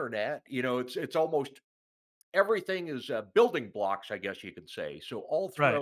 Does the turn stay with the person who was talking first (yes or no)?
no